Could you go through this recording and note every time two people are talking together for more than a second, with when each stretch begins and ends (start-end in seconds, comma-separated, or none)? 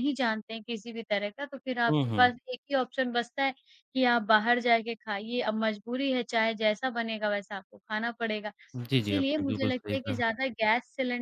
9.0-10.2